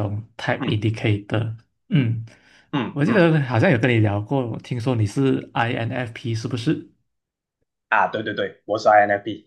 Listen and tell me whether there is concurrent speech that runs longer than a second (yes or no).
no